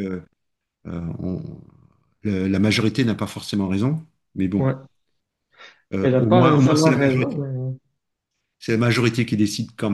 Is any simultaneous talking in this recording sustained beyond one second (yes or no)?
yes